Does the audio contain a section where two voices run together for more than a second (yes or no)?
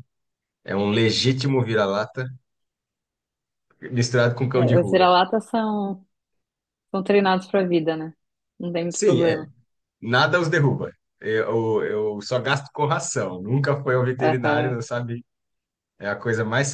no